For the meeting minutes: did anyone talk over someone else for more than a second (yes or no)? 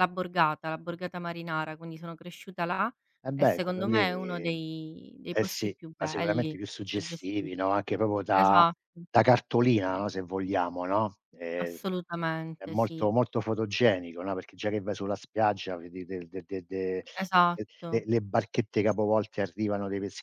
yes